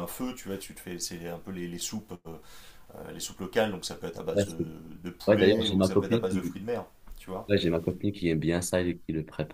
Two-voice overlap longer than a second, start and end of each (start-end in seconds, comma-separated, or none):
5.3-6.5